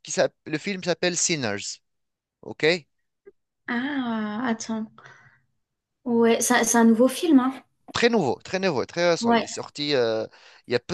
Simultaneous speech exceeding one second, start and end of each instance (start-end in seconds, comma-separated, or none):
none